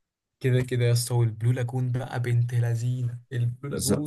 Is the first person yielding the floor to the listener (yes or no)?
yes